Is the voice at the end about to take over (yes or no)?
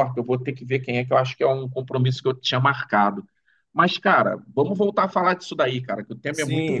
yes